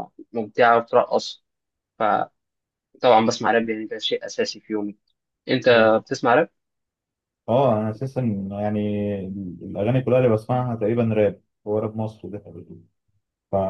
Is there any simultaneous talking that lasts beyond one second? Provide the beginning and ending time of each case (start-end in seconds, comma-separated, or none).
none